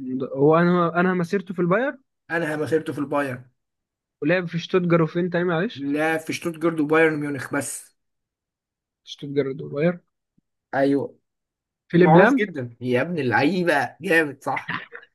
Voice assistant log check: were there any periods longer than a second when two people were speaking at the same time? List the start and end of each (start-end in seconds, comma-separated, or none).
none